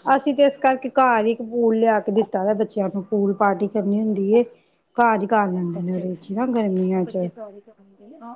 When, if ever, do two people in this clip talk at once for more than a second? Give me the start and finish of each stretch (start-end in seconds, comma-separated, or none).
5.6-7.3